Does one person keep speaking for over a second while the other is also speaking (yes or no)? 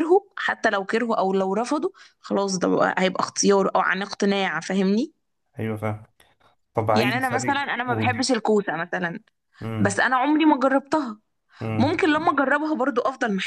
yes